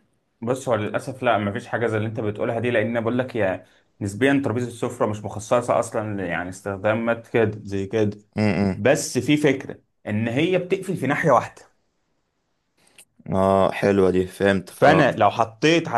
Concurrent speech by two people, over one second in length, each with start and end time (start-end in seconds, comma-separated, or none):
none